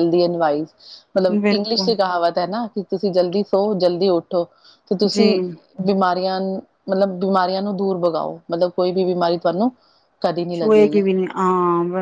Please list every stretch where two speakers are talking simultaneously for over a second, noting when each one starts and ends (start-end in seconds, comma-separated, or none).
none